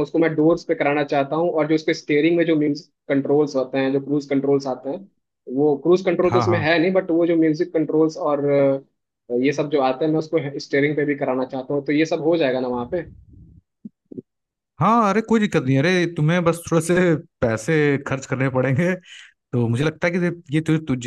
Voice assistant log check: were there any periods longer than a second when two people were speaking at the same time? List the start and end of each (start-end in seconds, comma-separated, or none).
none